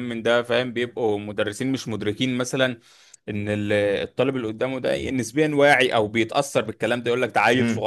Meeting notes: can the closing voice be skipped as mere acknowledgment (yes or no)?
yes